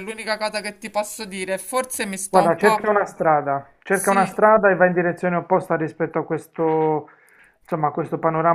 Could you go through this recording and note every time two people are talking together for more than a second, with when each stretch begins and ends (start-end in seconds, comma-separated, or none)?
none